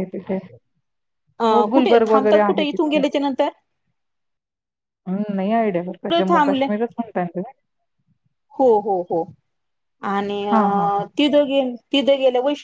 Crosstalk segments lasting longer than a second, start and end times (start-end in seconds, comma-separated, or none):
1.5-3.0